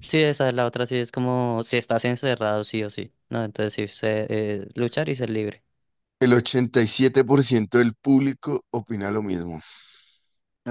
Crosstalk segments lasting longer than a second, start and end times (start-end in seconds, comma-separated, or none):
none